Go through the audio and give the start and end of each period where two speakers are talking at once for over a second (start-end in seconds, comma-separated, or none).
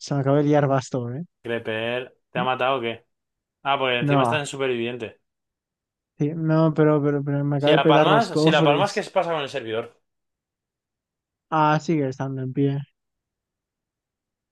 7.6-9.0